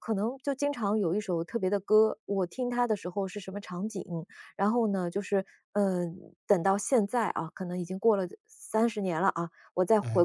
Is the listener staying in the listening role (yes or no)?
yes